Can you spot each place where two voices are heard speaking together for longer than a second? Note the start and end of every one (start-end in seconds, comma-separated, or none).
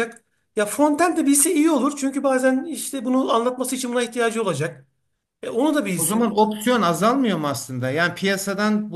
none